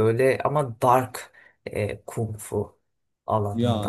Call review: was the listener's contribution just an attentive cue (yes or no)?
yes